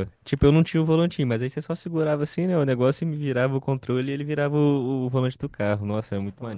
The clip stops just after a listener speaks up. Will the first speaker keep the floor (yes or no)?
no